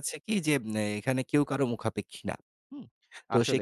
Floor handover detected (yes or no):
no